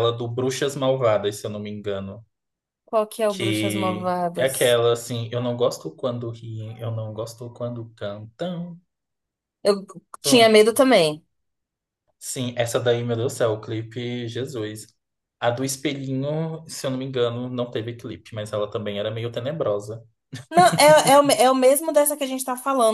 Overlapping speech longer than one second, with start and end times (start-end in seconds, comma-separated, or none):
3.3-4.8